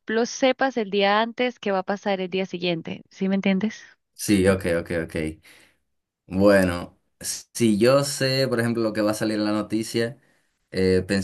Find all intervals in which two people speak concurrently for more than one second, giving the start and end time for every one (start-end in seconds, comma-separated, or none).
none